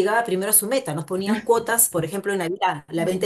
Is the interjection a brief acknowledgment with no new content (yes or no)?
yes